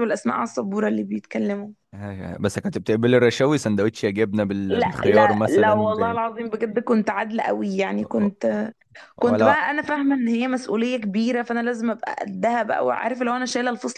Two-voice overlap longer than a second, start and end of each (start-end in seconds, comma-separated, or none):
4.7-6.2